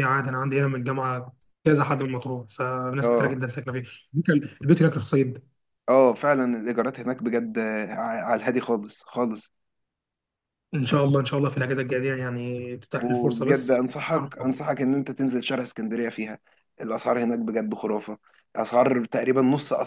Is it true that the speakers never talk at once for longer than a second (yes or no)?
no